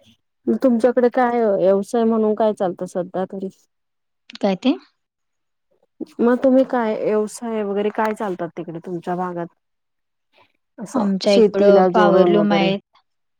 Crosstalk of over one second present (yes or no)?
yes